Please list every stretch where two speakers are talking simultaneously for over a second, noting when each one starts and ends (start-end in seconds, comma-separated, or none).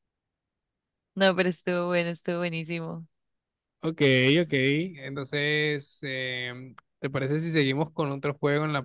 none